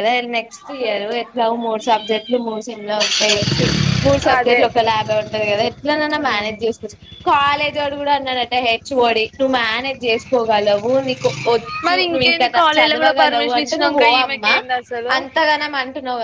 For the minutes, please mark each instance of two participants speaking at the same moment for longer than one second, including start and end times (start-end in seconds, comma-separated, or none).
11.9-14.4